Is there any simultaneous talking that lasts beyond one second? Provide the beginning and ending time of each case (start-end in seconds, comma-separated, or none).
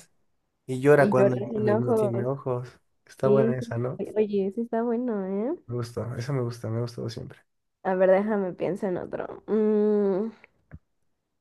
1.0-2.3